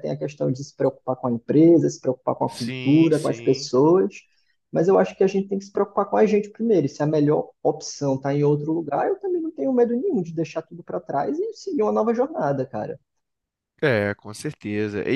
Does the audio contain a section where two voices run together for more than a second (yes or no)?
yes